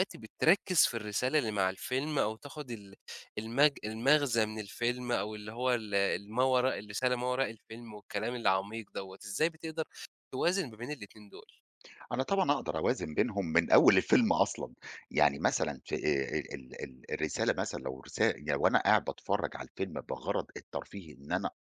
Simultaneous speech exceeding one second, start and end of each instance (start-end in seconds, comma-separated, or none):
none